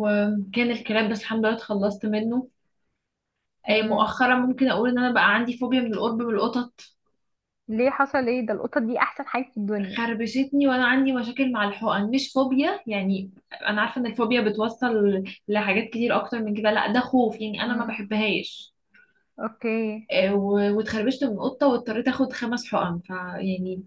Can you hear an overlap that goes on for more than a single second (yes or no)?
no